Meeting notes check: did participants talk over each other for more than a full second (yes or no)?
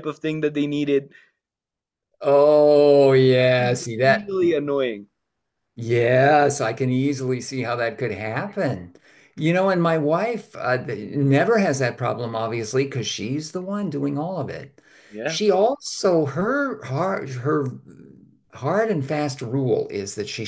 yes